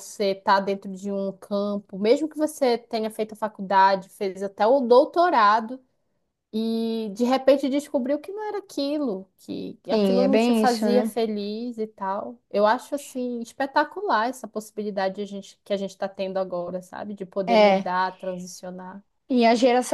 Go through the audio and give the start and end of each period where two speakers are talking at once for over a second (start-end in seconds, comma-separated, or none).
9.9-11.1